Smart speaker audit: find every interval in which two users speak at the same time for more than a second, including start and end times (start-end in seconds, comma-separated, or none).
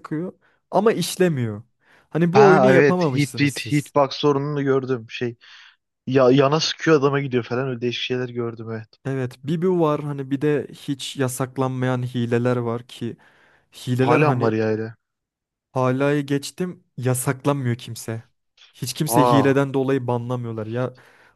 2.3-3.9